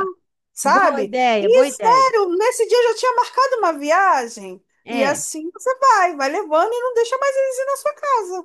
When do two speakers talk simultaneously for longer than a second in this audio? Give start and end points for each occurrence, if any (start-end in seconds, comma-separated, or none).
0.6-2.1